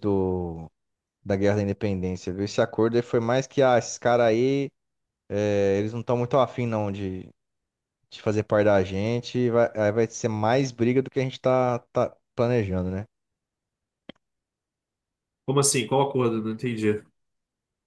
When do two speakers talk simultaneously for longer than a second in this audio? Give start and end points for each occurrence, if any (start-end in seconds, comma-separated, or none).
none